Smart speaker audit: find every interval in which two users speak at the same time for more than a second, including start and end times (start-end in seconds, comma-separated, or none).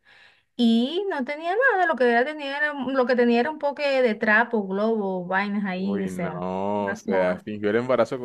5.8-7.5